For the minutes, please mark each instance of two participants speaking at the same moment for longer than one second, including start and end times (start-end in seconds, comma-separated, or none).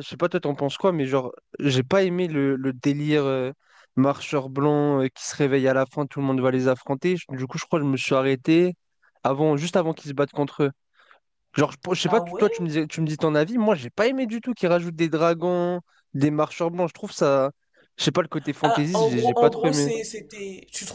18.6-19.9